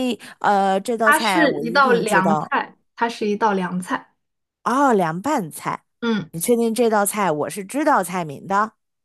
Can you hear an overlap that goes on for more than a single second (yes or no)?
yes